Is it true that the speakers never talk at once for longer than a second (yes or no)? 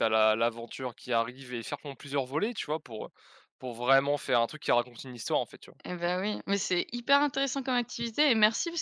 yes